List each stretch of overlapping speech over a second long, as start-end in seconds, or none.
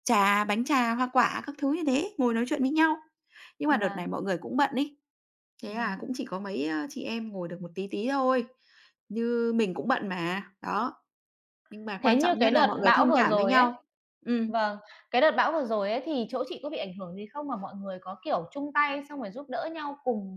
12.0-13.7